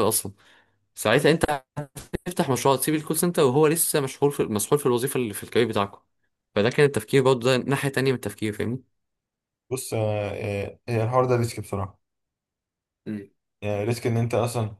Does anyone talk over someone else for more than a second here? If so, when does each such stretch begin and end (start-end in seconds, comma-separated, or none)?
none